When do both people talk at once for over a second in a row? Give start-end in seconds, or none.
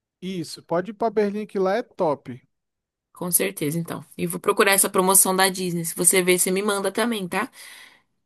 none